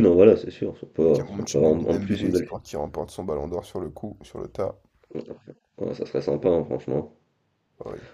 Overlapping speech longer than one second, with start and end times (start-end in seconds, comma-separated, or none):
1.0-2.5